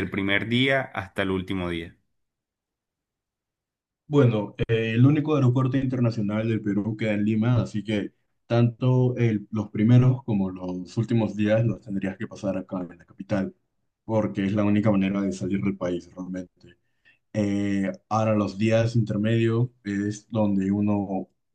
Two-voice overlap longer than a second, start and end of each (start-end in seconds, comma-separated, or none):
none